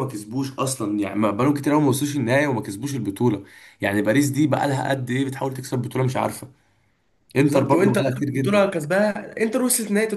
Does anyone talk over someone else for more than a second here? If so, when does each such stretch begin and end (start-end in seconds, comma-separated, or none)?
7.4-8.7